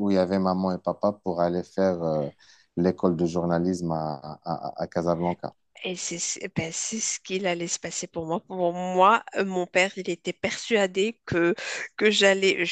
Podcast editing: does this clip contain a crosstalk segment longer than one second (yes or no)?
no